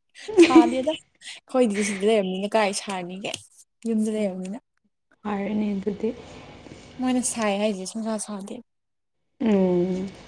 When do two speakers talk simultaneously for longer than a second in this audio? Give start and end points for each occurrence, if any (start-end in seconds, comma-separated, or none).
none